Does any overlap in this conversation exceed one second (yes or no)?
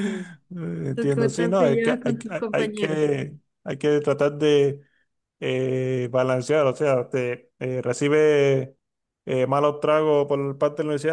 yes